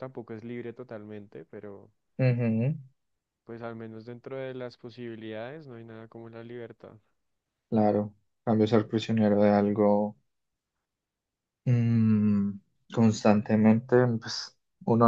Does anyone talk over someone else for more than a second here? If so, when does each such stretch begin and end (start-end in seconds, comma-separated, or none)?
none